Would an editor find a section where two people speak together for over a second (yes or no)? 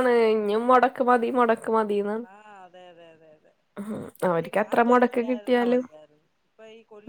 yes